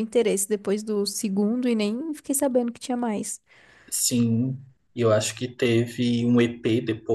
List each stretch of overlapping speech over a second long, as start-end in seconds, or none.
none